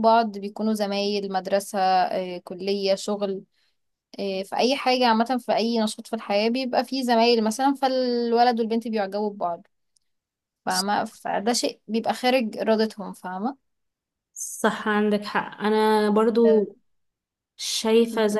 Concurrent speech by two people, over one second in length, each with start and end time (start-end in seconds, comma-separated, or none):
none